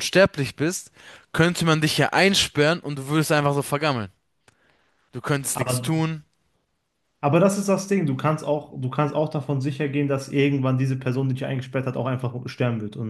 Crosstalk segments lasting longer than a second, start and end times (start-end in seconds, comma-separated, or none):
none